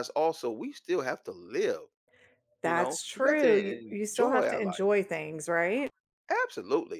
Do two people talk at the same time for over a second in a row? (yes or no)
yes